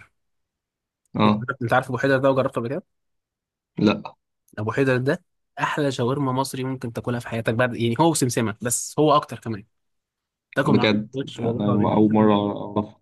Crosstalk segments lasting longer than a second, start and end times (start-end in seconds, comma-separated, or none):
10.6-12.3